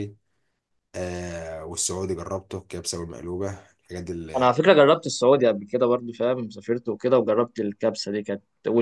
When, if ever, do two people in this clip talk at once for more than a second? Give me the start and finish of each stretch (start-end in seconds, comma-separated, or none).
none